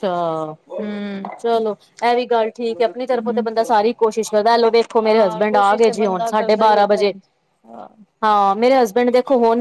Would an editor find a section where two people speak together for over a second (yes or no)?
yes